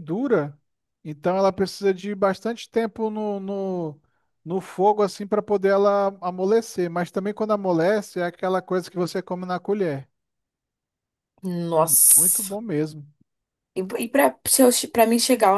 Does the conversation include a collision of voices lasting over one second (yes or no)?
no